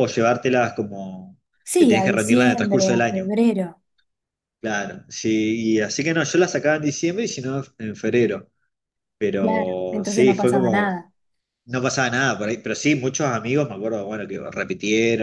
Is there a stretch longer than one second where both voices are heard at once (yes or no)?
yes